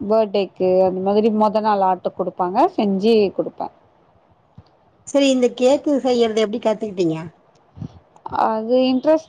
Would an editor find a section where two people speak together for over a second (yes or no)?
no